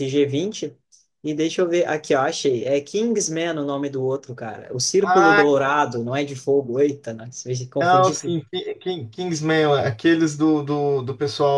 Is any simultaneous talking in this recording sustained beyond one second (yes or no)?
no